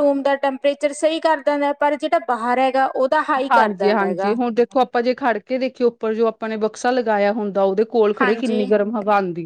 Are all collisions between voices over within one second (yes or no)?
yes